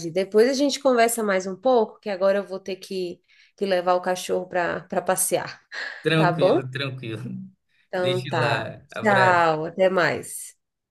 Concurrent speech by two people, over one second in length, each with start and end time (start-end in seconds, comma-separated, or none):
8.0-9.5